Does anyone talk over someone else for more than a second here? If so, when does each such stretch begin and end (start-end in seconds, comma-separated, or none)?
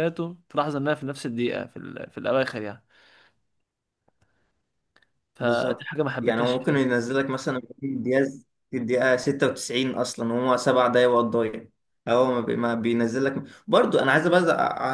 5.4-7.0